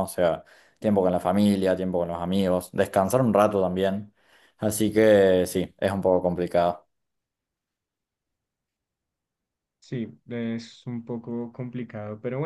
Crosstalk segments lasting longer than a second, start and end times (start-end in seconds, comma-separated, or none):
none